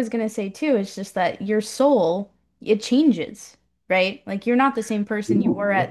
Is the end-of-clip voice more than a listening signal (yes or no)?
no